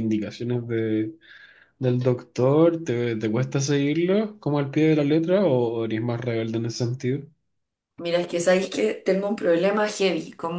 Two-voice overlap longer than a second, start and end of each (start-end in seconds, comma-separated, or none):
none